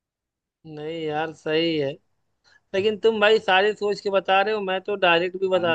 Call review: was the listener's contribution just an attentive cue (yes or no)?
yes